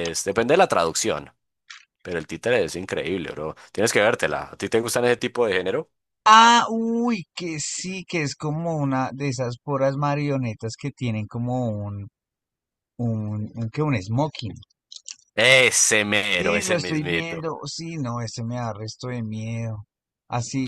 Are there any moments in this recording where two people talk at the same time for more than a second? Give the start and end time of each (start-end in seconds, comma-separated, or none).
16.2-17.5